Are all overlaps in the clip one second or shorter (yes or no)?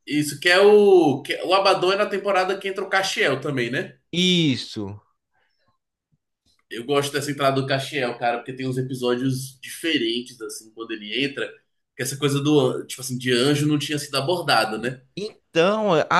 yes